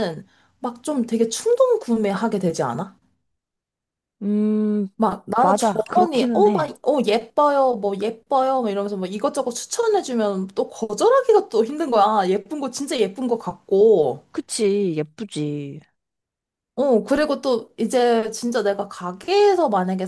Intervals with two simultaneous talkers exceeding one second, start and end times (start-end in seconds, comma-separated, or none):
5.4-6.7